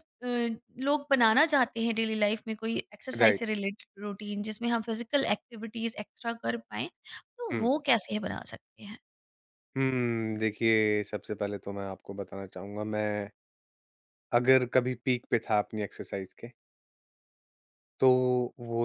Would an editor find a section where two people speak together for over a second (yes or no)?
no